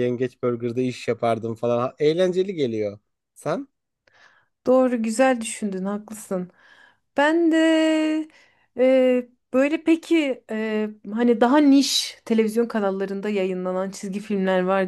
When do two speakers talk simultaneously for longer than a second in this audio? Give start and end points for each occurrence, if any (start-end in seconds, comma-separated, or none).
none